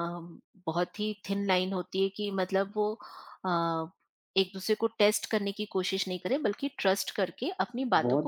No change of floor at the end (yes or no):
no